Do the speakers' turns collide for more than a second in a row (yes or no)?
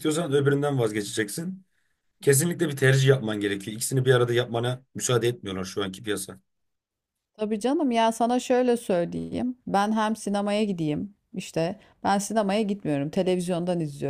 no